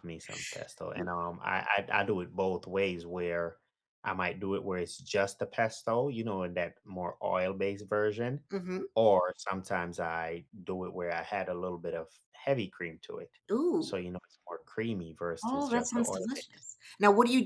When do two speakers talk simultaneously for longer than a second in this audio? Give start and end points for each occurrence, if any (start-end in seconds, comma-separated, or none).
15.4-16.7